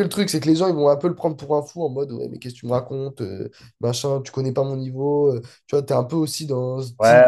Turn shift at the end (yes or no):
yes